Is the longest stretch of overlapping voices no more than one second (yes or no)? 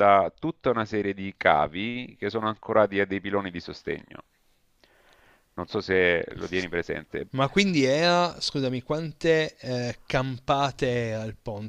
yes